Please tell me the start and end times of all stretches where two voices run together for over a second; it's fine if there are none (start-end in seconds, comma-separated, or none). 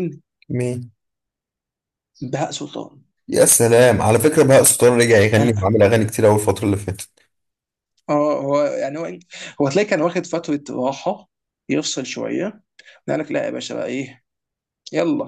none